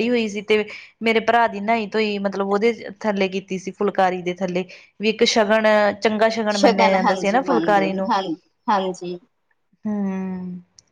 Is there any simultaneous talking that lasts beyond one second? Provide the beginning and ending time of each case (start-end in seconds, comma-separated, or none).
none